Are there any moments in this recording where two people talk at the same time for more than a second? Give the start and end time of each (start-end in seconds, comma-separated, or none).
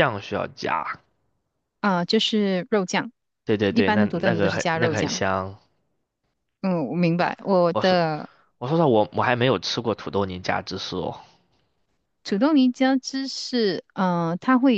3.7-5.2